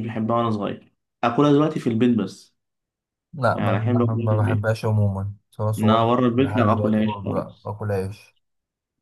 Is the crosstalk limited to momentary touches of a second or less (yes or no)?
no